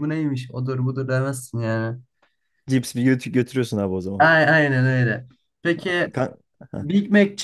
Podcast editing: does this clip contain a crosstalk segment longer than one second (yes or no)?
no